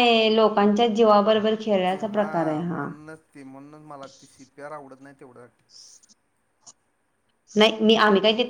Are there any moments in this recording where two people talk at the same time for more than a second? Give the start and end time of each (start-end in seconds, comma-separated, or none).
none